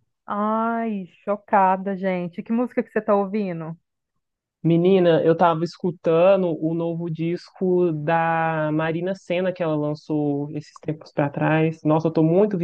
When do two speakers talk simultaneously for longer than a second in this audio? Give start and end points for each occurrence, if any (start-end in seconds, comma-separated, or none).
none